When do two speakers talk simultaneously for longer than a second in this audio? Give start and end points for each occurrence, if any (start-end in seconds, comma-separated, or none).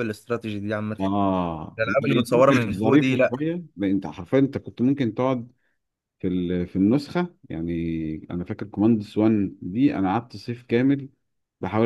1.8-3.4